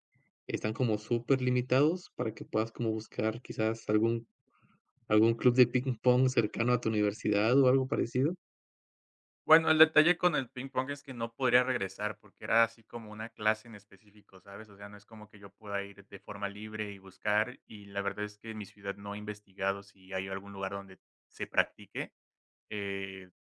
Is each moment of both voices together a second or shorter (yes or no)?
yes